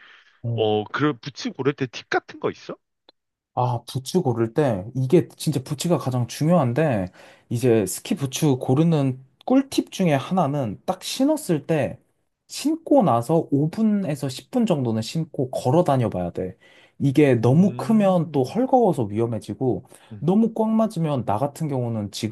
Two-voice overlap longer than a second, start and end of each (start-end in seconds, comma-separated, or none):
17.4-18.6